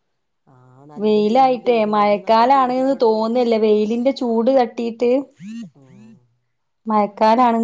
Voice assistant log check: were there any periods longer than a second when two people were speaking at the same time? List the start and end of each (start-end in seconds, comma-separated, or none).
1.0-3.1